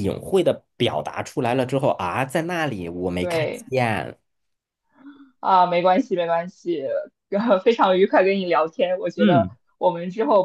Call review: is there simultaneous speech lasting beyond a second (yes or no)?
no